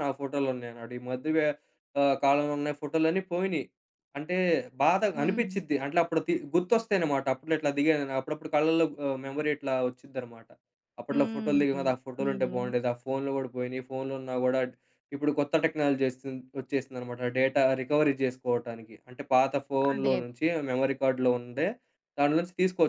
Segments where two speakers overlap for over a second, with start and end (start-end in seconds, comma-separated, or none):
11.1-12.7